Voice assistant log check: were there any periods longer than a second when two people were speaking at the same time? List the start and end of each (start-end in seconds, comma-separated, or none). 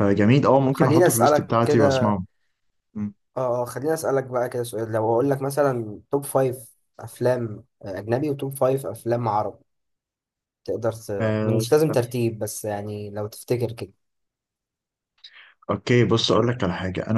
0.6-2.2